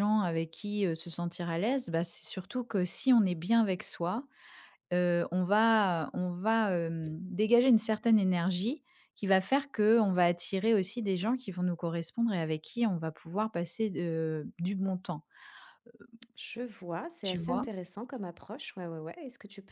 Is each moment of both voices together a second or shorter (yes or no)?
yes